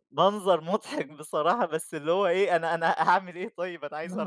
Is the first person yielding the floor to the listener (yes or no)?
yes